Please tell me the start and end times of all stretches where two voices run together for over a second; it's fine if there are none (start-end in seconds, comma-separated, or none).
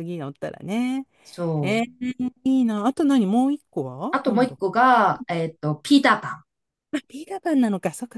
none